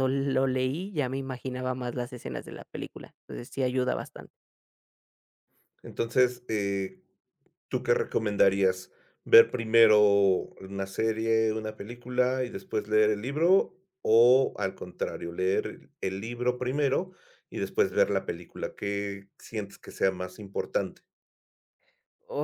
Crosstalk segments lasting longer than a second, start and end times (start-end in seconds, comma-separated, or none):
none